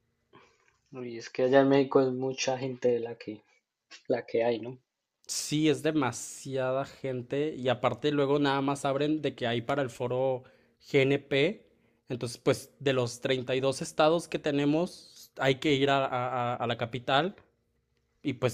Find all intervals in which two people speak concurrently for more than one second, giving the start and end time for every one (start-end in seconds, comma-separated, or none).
none